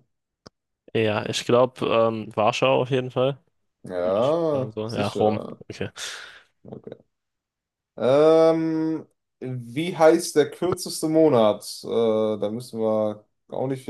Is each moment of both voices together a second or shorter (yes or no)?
no